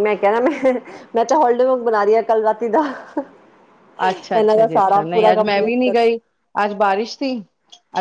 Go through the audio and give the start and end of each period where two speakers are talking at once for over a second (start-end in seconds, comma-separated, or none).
4.3-5.9